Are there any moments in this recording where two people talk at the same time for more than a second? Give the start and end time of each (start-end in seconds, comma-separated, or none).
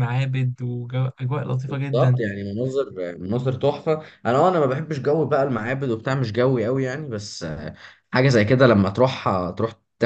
none